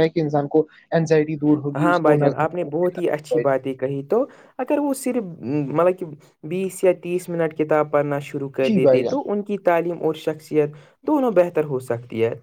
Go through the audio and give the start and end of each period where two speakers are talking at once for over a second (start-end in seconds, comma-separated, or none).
1.8-3.4